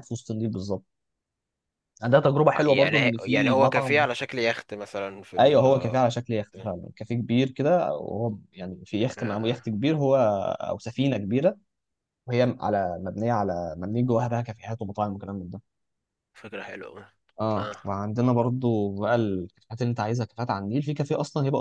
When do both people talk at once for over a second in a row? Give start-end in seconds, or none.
2.6-4.0